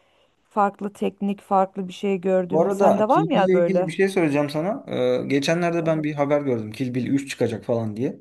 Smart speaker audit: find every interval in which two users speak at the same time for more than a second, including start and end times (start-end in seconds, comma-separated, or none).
2.5-3.9